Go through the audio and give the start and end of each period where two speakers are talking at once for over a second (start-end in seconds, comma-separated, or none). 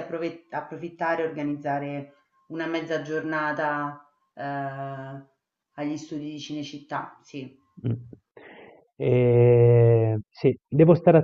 none